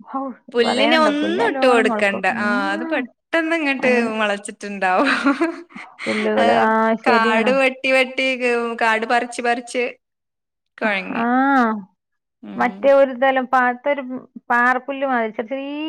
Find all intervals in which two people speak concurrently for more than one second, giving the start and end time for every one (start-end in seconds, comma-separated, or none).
0.7-3.0